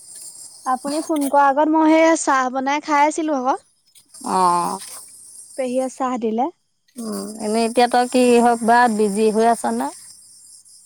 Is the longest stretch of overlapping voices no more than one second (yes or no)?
yes